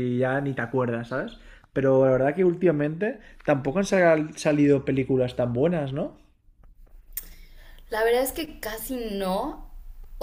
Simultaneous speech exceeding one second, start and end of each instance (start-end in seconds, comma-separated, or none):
none